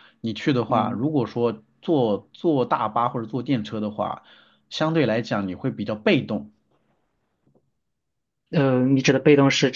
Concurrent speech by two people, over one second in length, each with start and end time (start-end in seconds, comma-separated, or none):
none